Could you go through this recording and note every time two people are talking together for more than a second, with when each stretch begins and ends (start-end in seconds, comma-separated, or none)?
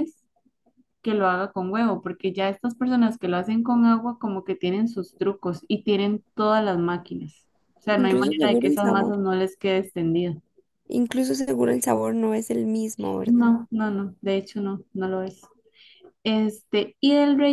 7.9-9.2